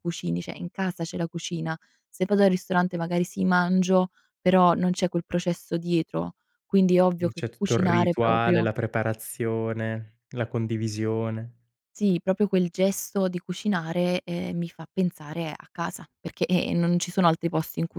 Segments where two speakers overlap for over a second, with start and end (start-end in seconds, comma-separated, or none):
7.3-8.7